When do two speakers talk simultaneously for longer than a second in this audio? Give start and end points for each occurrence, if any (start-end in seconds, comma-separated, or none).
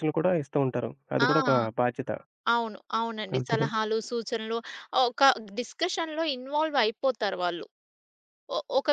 none